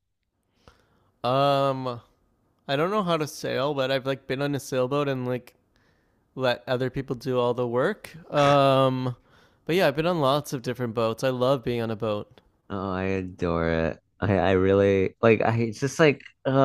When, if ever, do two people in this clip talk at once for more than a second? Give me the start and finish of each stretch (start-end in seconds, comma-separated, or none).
none